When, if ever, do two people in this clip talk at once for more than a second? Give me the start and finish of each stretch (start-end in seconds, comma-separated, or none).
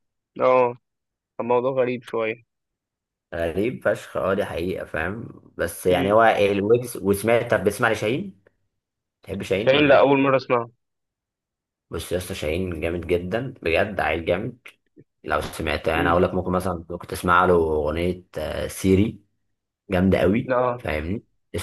none